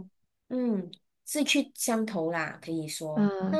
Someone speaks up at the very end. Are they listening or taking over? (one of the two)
taking over